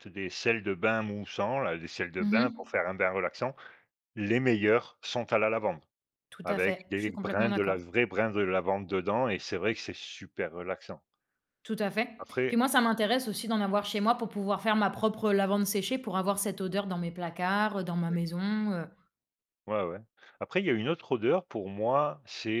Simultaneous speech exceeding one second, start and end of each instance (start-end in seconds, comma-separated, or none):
6.4-7.8